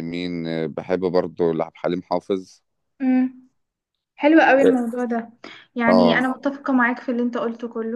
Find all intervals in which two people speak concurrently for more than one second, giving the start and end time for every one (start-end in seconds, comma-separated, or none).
none